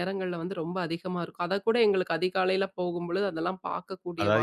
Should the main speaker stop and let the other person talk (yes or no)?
yes